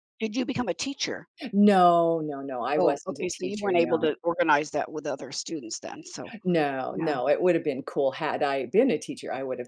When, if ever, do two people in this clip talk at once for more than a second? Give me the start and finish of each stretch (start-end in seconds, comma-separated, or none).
2.8-4.1